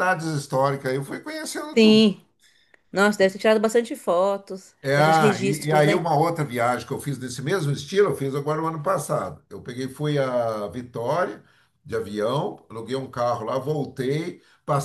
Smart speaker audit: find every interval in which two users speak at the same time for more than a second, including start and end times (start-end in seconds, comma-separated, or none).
4.8-6.0